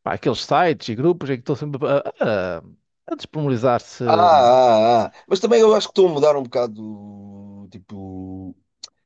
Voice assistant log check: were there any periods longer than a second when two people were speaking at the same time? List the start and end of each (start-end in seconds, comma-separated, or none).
none